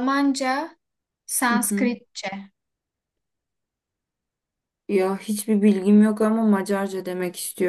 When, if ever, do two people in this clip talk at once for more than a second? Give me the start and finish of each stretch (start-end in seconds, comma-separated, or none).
none